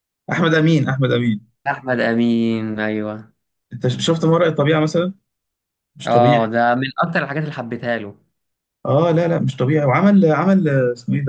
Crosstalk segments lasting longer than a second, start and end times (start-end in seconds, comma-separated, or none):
none